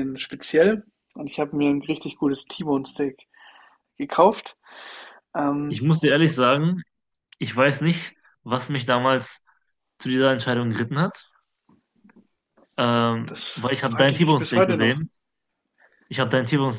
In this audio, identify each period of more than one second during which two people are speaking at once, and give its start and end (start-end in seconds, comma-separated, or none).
13.2-15.0